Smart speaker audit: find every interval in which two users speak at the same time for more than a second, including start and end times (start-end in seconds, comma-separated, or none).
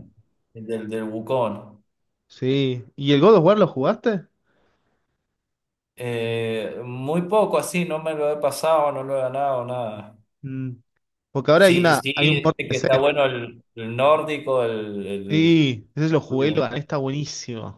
11.6-12.9